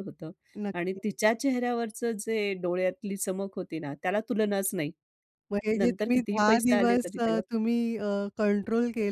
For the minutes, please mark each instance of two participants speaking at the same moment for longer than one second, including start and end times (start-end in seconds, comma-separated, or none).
5.8-7.4